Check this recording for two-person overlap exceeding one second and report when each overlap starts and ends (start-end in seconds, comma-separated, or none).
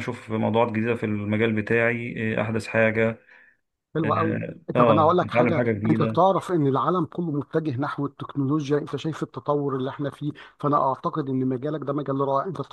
4.0-6.2